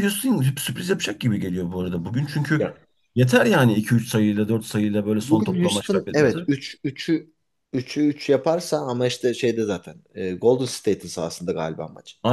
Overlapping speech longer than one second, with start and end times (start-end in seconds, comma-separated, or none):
5.2-6.4